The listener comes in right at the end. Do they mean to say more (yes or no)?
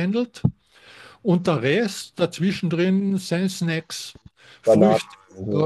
no